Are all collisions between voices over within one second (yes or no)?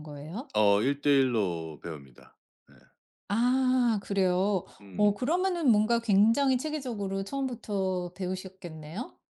yes